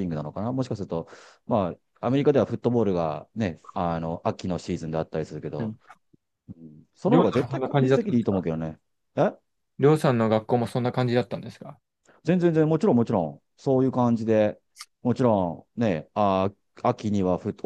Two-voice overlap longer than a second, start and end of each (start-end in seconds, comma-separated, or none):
7.1-8.5